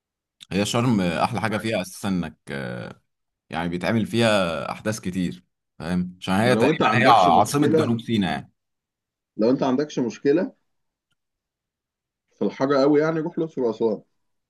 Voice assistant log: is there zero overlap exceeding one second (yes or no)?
no